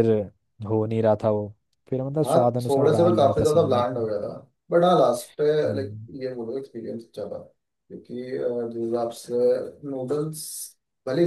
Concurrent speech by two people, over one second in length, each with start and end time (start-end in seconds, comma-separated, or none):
2.2-4.1